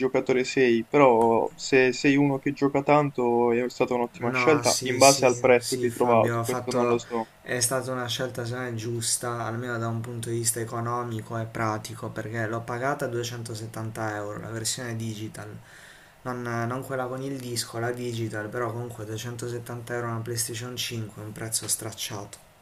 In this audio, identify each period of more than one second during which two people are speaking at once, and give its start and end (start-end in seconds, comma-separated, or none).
4.2-7.0